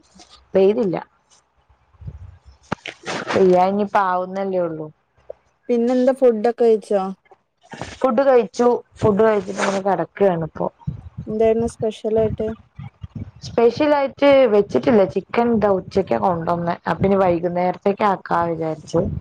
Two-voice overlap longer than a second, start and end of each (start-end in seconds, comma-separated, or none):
none